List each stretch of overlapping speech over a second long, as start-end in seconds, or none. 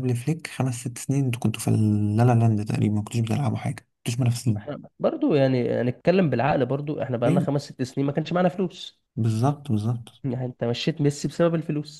none